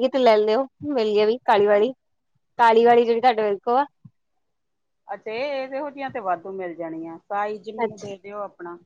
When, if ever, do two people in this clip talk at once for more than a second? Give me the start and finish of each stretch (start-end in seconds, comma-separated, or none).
none